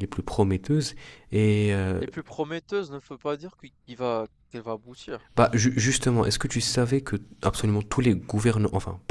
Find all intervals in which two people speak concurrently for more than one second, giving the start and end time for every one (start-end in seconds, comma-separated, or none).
none